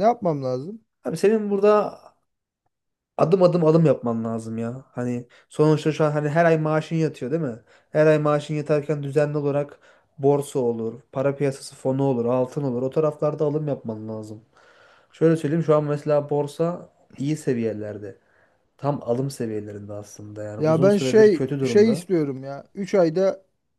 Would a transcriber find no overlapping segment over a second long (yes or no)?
no